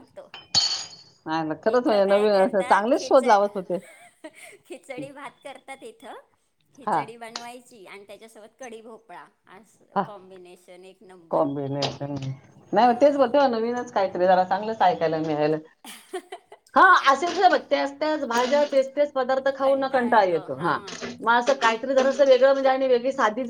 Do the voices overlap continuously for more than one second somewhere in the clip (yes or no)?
yes